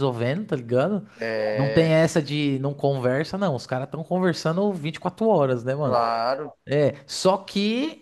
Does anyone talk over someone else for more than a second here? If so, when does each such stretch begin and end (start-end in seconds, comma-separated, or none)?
none